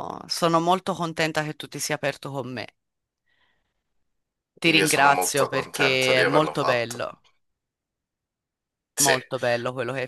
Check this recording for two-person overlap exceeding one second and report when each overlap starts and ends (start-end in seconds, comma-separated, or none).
4.6-7.1